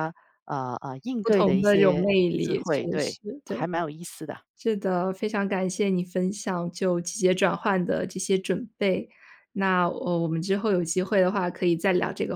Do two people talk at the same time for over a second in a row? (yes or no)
yes